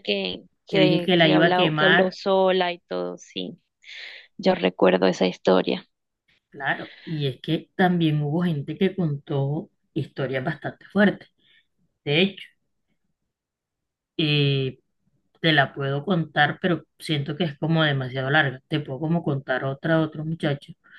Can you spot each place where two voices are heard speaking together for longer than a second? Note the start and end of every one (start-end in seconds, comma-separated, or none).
0.7-2.1